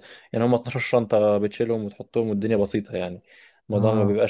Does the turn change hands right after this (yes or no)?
no